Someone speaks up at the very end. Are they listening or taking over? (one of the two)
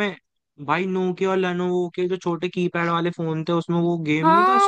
taking over